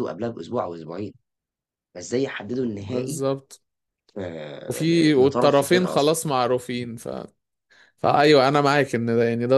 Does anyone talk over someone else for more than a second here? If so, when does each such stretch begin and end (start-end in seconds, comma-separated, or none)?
4.7-6.2